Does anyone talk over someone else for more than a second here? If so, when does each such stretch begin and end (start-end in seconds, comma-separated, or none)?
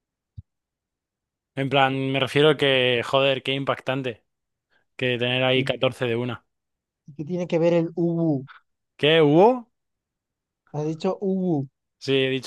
none